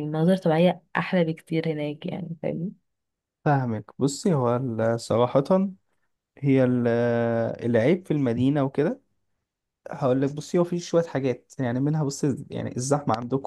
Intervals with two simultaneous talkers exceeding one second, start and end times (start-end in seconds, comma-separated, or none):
none